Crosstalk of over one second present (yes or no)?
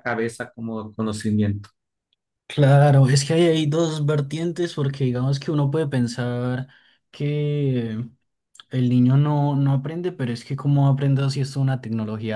no